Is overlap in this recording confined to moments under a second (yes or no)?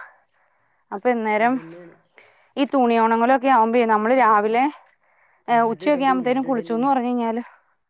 no